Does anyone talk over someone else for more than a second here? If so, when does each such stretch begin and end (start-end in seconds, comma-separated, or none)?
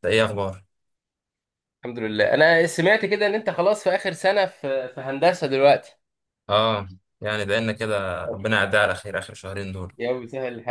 none